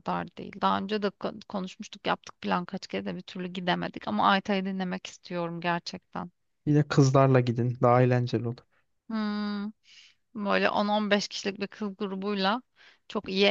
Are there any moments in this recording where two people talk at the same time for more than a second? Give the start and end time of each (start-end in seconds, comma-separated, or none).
none